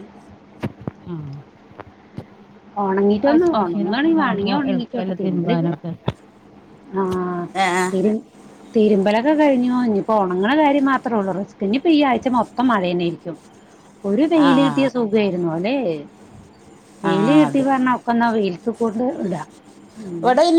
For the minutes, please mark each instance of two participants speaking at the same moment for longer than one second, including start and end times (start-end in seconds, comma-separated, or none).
3.2-4.5